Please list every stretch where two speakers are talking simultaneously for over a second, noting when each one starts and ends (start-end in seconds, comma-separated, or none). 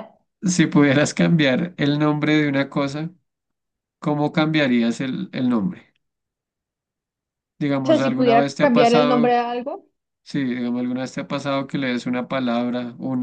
7.8-9.4